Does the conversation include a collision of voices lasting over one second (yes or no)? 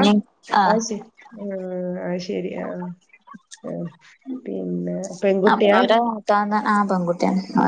no